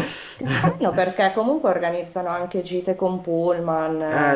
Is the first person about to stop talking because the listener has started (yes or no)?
yes